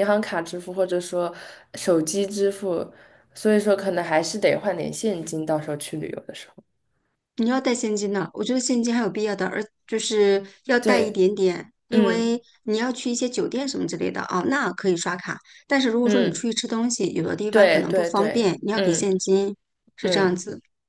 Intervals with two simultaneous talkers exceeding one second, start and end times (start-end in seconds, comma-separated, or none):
17.5-19.2